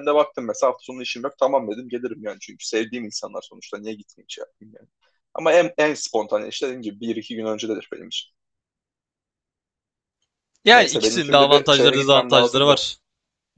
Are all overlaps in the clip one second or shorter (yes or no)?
no